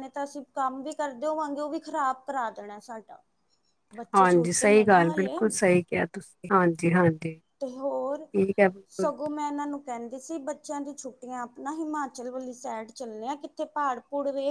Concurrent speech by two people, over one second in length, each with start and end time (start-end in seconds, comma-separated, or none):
4.1-5.4